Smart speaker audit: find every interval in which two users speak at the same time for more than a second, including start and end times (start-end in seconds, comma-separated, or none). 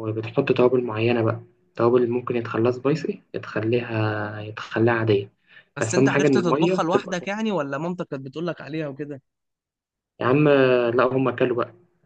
5.8-7.3